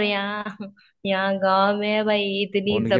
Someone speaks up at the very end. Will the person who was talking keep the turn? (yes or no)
no